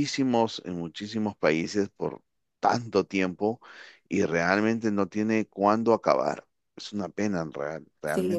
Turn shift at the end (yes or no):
yes